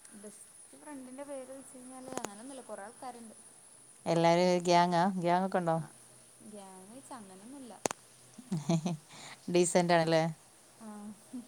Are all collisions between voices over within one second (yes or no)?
yes